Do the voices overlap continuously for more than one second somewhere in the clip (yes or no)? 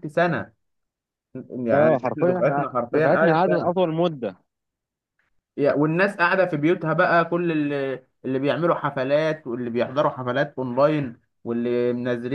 yes